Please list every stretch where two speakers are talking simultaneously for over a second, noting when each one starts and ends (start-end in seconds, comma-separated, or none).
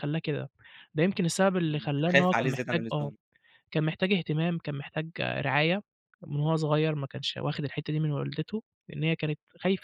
1.6-3.1